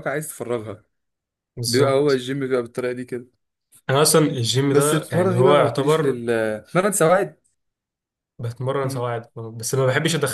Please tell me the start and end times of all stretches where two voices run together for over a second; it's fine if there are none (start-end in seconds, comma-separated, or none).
4.7-6.2